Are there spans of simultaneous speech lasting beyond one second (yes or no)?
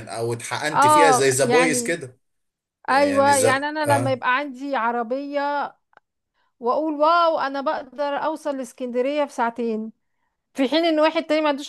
yes